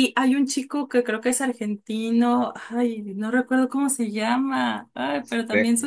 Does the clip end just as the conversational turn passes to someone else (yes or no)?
no